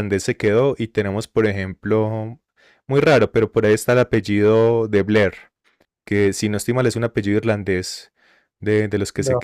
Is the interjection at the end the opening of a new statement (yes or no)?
no